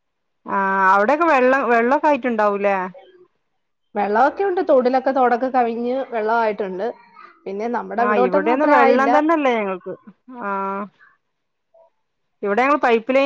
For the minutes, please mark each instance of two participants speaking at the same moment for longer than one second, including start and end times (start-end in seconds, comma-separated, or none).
none